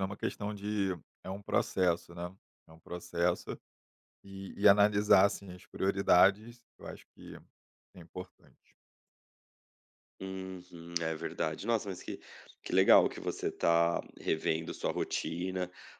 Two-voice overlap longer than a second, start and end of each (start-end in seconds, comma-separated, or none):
none